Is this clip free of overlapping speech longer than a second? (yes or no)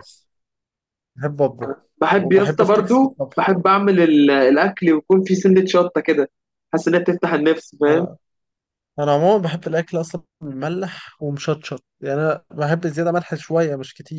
no